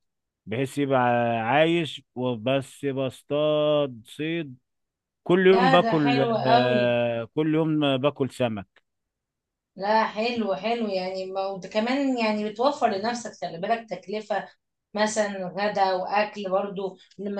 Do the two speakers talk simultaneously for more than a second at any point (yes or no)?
yes